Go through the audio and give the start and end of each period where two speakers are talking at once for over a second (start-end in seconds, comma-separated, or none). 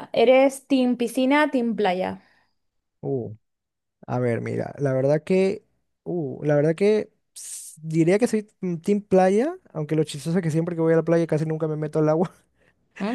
none